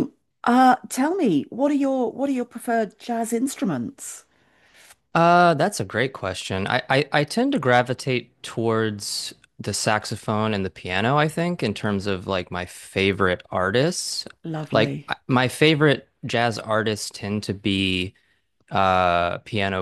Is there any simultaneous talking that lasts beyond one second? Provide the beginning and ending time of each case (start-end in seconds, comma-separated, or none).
none